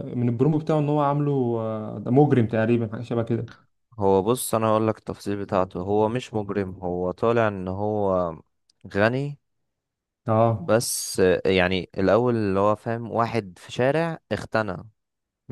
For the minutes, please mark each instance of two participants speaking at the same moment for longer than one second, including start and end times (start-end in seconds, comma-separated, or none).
none